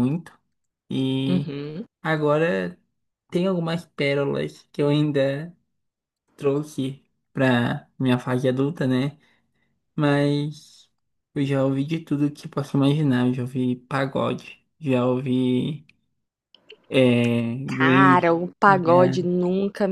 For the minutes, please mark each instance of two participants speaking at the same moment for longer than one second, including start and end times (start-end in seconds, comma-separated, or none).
17.8-19.2